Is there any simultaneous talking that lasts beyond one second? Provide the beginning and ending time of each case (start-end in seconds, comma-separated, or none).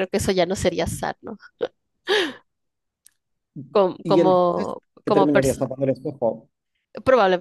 4.0-5.7